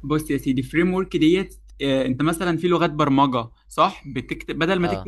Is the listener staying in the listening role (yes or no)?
yes